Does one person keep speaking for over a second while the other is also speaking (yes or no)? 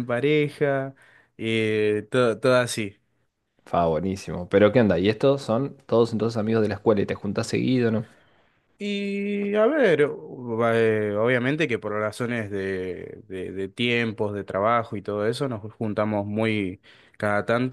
no